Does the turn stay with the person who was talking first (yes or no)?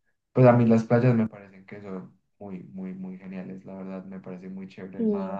yes